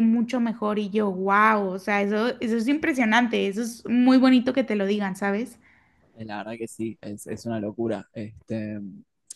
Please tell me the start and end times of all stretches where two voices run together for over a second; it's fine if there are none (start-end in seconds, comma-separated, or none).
none